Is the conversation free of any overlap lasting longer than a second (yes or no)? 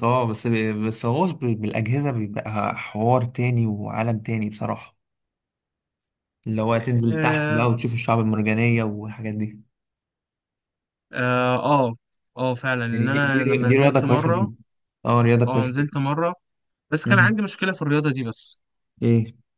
no